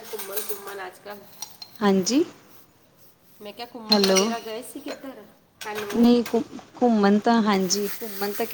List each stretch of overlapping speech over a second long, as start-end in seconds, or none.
none